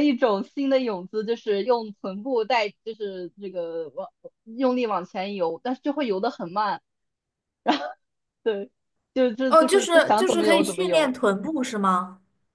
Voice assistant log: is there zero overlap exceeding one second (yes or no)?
no